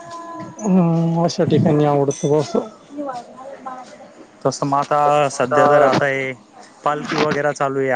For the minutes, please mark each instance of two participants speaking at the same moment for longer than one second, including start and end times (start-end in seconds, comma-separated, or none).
none